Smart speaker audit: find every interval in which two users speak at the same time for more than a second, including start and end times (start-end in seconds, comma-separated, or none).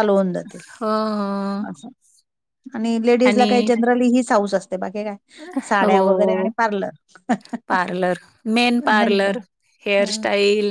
none